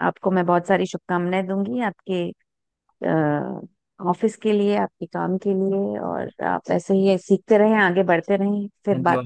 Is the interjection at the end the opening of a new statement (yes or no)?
yes